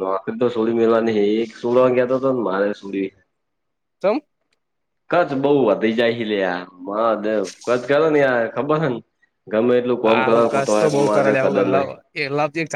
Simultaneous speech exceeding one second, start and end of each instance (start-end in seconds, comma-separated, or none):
10.0-11.9